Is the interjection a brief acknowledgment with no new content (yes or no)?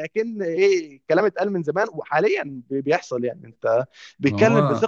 yes